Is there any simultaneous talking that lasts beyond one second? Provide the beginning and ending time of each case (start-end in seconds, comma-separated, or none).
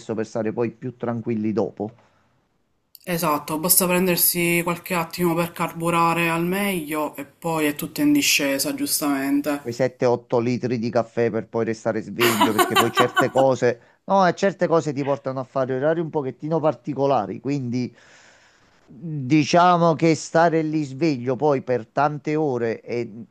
none